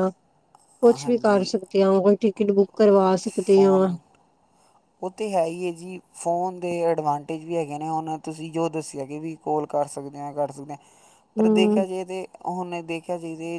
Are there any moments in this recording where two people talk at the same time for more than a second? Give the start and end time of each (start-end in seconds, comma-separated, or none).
none